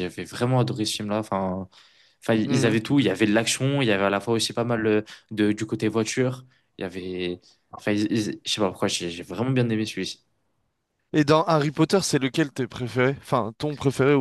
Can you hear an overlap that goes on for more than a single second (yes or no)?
no